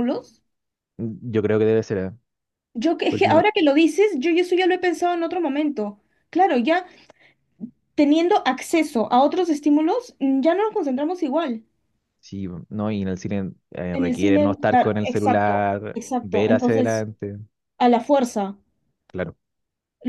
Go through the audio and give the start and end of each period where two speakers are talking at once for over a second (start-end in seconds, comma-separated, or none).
13.9-17.0